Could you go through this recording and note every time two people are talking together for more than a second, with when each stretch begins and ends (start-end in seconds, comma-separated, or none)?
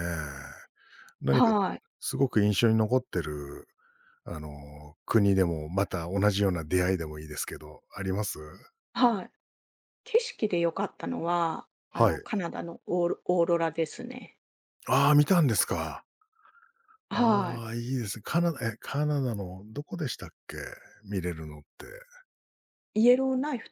none